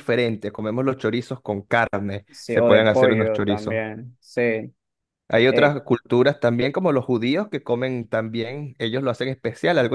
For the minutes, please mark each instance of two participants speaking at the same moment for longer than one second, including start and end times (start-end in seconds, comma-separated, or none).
2.3-3.8